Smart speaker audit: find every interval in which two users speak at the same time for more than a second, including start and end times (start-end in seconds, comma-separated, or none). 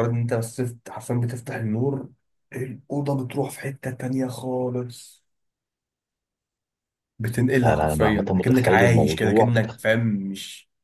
7.6-9.8